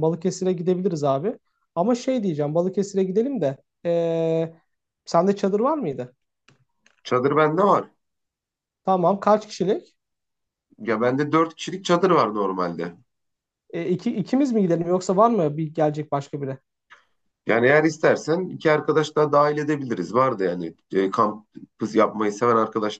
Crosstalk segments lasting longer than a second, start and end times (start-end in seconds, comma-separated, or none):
none